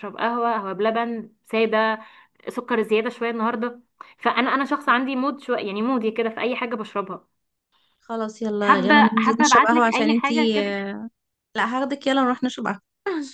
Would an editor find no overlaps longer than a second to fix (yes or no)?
no